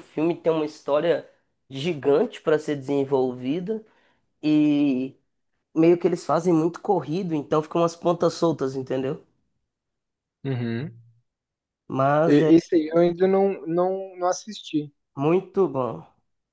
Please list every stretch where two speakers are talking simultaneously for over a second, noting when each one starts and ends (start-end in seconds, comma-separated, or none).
none